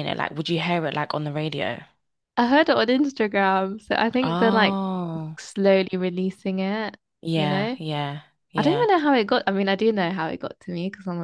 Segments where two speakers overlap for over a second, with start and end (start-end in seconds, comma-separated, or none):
none